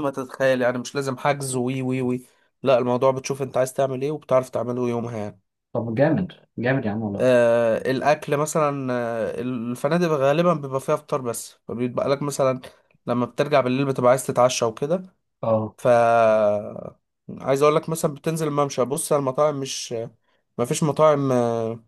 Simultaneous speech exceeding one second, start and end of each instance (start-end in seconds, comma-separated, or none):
none